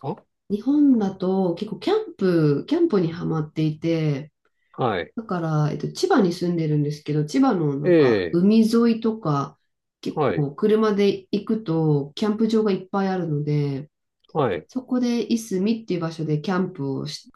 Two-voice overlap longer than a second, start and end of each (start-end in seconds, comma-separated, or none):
none